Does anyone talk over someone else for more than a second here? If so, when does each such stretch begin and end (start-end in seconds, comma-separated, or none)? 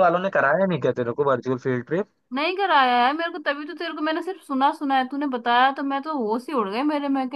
none